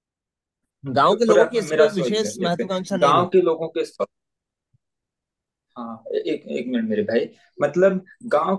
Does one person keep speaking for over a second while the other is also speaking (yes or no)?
yes